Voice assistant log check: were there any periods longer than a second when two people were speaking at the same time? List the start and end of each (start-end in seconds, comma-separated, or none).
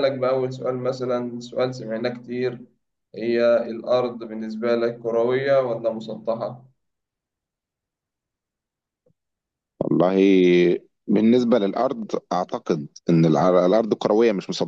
none